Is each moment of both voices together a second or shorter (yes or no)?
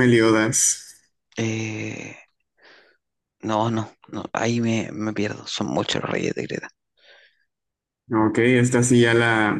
yes